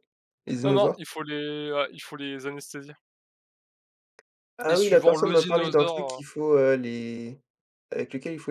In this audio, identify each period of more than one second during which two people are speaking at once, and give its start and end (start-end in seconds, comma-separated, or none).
4.7-6.2